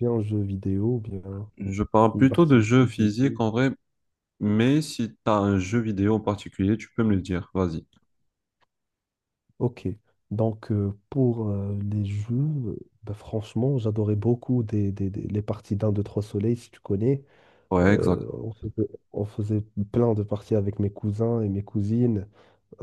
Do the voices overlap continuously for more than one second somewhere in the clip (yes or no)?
yes